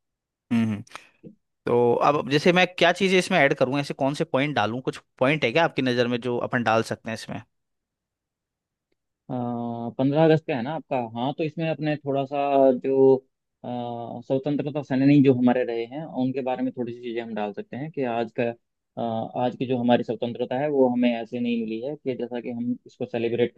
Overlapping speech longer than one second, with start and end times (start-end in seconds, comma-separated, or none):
none